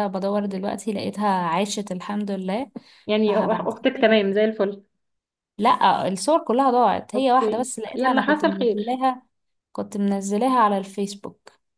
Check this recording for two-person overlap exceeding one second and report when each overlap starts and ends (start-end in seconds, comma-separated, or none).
7.1-9.0